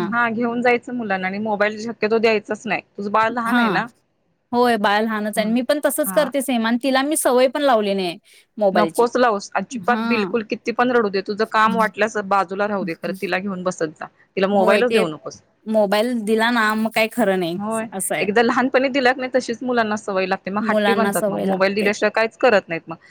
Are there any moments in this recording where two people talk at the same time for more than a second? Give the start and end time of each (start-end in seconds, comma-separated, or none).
20.7-21.9